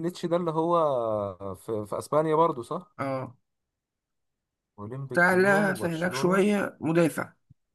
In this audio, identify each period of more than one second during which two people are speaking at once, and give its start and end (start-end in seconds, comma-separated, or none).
5.2-6.4